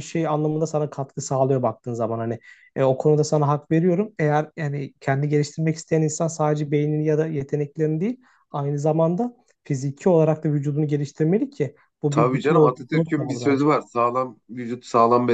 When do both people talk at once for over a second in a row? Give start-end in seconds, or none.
12.1-13.7